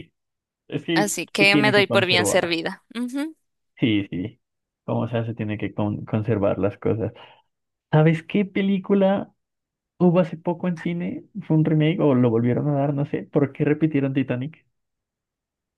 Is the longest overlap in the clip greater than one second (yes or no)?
yes